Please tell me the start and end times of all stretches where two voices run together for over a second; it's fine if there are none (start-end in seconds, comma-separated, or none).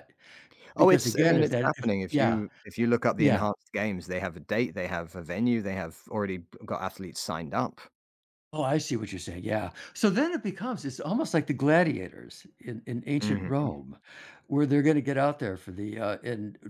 0.8-2.4